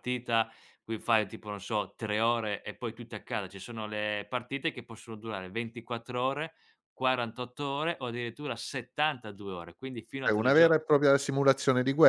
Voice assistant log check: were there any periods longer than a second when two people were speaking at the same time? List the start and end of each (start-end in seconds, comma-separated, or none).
none